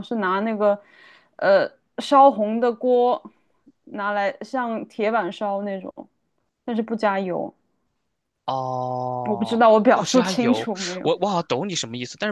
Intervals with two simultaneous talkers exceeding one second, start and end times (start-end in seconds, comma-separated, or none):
9.3-11.1